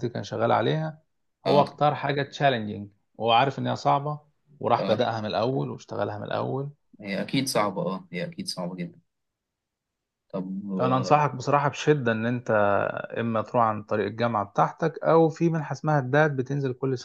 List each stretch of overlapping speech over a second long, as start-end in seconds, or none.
none